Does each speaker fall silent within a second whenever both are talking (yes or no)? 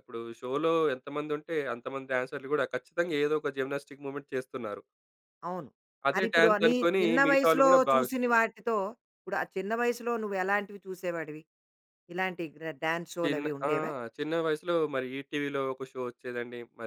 no